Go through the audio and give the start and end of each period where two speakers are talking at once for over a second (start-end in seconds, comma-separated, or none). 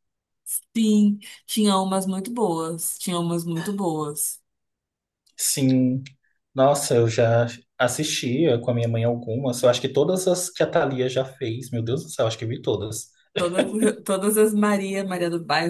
none